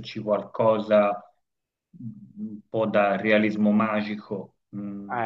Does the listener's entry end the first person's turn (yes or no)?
yes